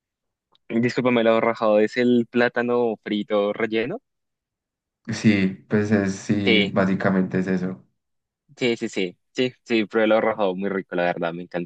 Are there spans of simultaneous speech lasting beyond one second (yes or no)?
no